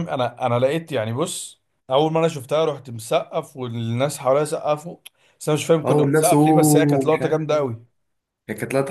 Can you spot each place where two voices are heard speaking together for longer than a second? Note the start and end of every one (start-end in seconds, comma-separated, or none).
5.8-7.4